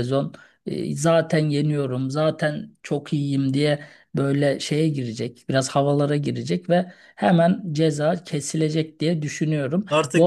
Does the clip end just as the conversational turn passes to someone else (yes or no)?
yes